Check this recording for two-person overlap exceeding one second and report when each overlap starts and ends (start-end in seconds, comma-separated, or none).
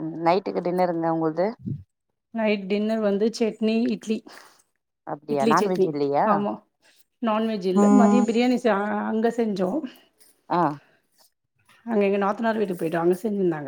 none